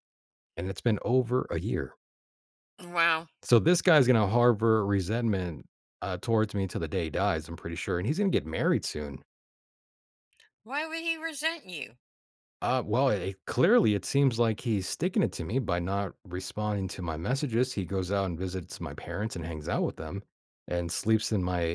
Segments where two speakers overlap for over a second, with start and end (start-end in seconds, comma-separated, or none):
none